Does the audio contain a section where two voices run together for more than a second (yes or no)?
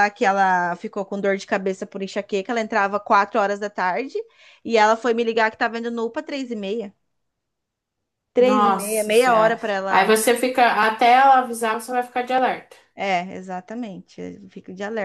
yes